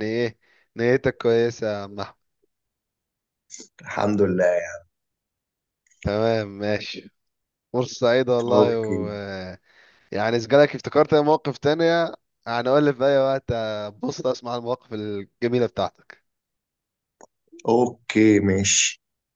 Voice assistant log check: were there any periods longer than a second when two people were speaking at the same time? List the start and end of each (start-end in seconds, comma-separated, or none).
none